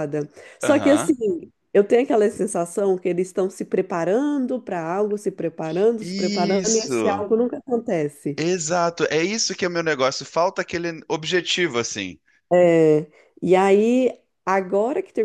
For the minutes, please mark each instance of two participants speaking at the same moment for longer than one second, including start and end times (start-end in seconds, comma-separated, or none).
6.0-7.2